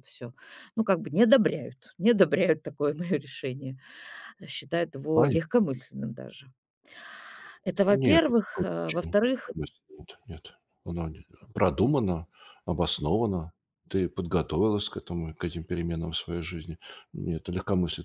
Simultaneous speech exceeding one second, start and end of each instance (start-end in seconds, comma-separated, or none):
7.9-9.5